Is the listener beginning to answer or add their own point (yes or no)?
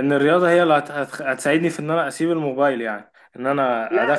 yes